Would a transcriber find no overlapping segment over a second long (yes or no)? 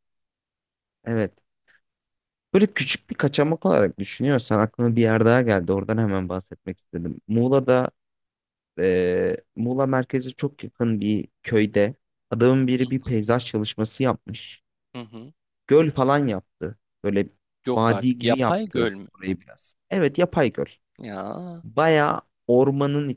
no